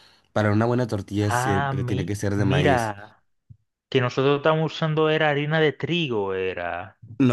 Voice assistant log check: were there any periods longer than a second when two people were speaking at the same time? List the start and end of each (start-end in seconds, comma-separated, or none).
1.2-2.9